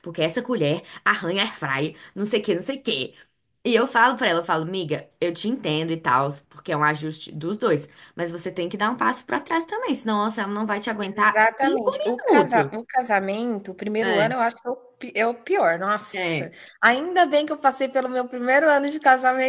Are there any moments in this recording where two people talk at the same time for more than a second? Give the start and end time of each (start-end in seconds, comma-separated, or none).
11.0-12.7